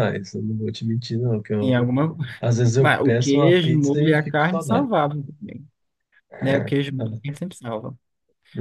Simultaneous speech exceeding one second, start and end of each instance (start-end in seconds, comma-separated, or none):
2.8-4.9